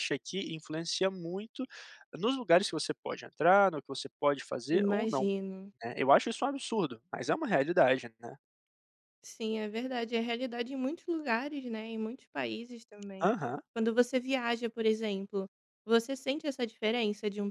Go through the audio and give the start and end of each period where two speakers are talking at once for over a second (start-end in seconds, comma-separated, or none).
none